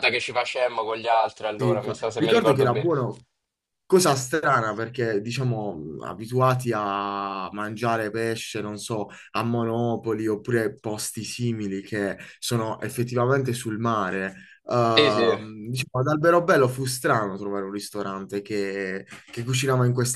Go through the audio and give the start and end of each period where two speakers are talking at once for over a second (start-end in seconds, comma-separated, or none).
1.5-2.9